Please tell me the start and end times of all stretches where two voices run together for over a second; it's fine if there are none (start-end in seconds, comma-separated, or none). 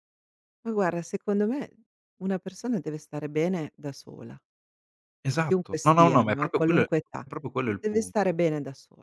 5.4-6.9